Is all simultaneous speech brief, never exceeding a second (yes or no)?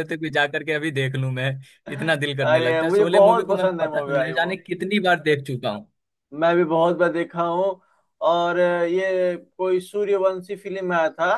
no